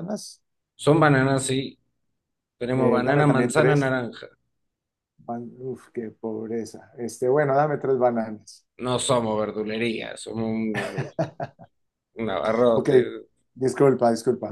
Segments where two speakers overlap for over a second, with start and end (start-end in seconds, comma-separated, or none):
2.7-3.9